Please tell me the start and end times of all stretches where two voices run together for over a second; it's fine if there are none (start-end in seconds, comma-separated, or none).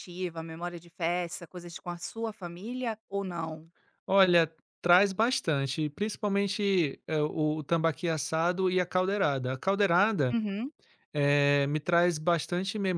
none